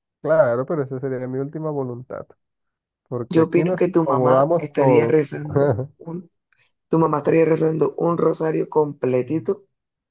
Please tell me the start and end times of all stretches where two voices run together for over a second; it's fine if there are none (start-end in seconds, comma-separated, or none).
3.3-5.2